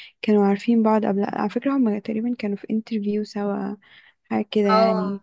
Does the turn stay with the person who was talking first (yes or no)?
yes